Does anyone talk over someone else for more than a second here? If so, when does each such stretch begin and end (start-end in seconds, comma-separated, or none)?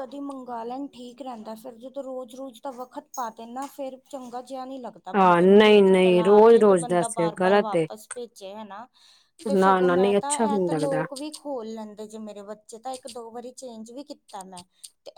5.2-7.9, 9.5-11.1